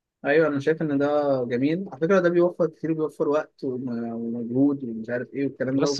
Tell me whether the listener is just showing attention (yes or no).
no